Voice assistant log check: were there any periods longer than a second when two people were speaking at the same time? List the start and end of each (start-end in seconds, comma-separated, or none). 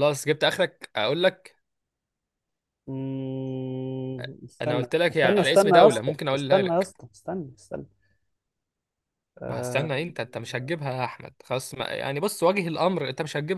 4.6-6.9